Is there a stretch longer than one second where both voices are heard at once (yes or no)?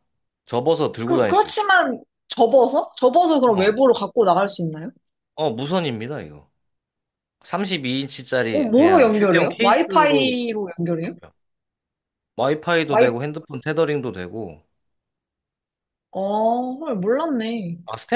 yes